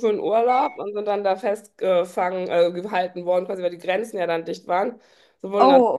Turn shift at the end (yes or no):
no